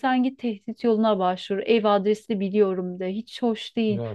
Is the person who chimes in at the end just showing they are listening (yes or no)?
no